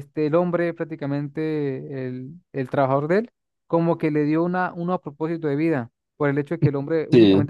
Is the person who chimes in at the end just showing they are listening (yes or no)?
yes